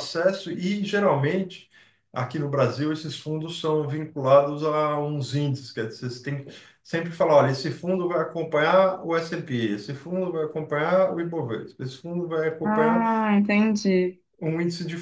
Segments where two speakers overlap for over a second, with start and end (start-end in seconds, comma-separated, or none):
none